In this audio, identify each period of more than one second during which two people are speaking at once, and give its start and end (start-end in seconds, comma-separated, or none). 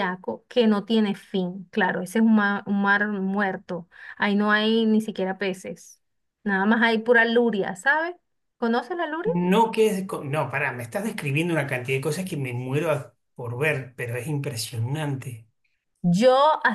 none